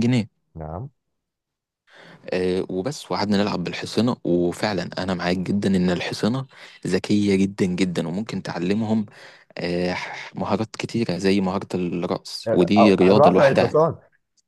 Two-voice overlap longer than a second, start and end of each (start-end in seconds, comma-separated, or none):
12.5-13.7